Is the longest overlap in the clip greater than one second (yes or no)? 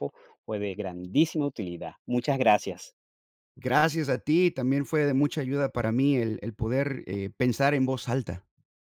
no